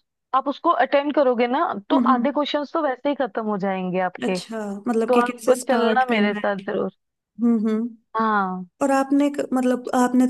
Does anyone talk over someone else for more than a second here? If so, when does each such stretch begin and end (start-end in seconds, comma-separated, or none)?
5.1-6.6